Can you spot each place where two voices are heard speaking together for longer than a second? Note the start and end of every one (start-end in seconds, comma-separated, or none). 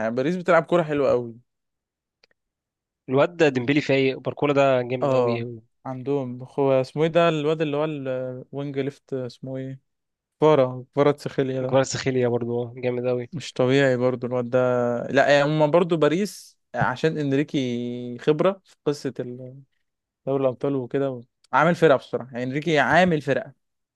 none